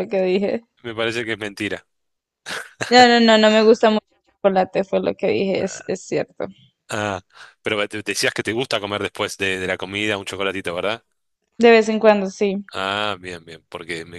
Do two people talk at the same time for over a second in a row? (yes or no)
no